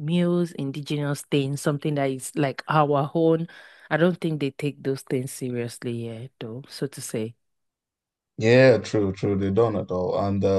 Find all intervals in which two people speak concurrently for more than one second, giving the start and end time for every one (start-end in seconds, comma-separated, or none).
none